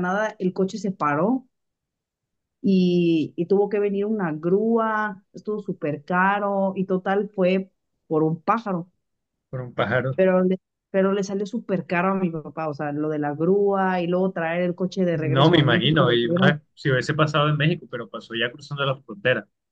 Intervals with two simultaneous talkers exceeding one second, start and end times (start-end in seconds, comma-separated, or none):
15.1-16.5